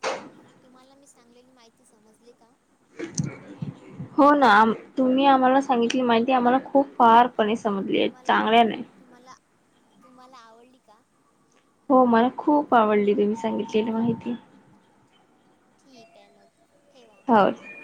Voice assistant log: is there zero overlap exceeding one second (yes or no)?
yes